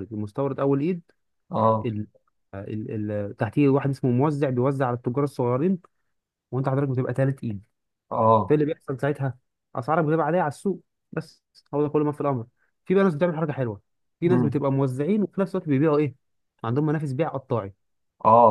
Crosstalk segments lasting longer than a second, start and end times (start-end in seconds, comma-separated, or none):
none